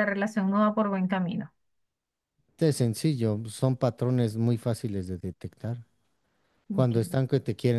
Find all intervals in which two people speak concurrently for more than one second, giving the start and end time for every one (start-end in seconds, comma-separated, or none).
none